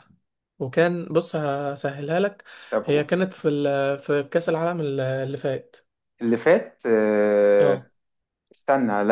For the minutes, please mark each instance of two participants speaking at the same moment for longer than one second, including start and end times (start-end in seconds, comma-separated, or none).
none